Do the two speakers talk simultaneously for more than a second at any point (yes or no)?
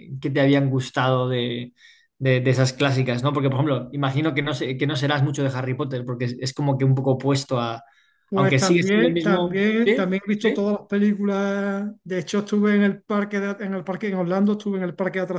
yes